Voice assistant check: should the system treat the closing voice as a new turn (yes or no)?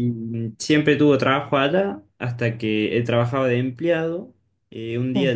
no